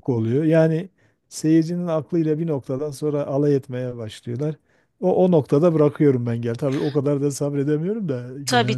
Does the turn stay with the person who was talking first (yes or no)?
no